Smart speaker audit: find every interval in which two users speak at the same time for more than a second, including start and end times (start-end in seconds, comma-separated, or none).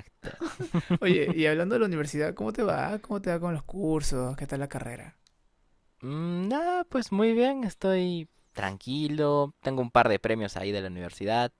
none